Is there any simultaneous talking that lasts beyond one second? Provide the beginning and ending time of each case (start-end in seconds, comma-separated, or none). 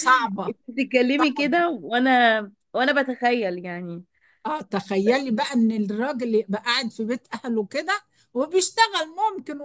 none